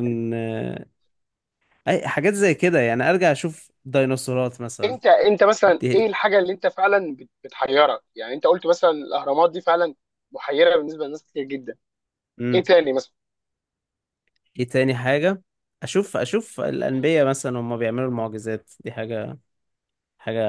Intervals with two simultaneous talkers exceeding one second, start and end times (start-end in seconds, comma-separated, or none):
none